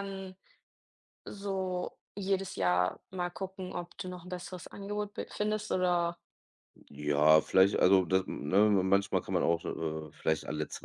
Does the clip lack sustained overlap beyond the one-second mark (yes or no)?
yes